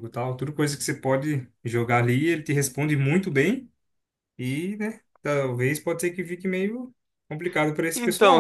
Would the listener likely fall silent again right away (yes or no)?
no